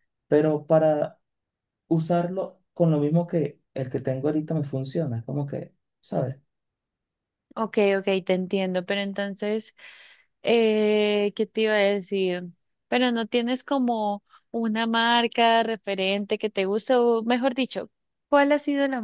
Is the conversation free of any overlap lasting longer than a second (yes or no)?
yes